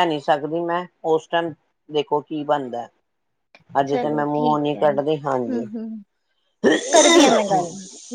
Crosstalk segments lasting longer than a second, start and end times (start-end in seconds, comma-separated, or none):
none